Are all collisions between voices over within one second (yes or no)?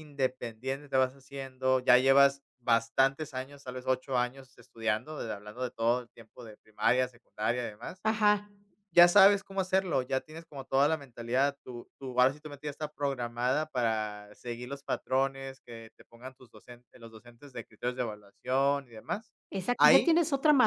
yes